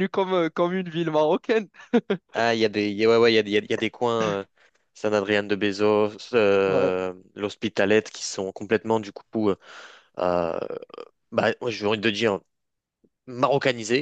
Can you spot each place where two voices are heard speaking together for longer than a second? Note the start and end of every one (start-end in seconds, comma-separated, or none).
none